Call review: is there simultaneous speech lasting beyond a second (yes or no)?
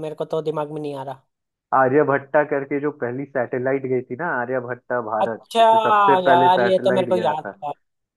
yes